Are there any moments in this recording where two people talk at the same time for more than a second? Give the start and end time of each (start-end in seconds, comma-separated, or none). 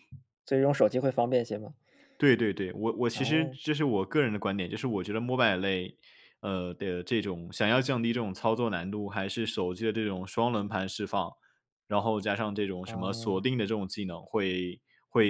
none